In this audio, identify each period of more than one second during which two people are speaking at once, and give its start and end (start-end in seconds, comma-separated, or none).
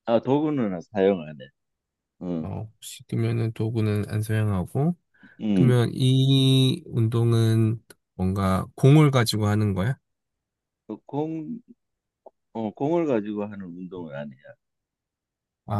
none